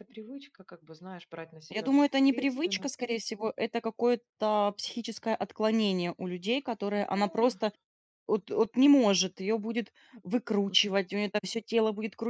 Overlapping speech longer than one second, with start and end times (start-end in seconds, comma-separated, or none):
1.7-3.1